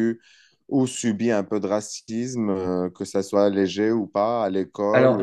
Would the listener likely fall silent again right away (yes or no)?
no